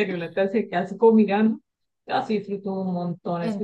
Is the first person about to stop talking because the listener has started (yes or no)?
yes